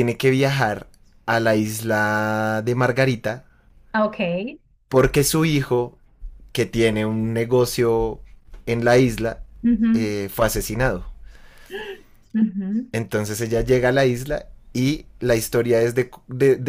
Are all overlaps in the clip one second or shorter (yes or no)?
yes